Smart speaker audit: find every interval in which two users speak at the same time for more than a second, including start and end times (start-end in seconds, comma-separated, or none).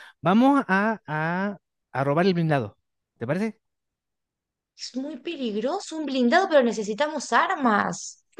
none